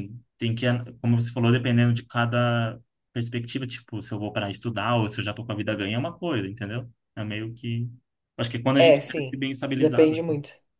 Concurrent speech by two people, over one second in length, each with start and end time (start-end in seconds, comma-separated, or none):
8.8-10.1